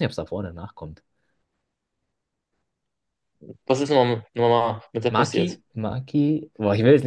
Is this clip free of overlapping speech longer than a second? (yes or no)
yes